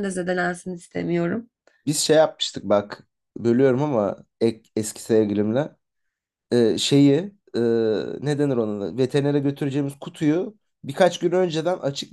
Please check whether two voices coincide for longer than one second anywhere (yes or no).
no